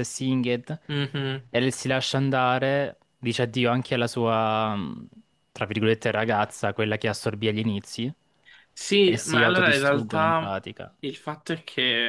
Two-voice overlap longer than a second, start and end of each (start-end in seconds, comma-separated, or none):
9.0-10.5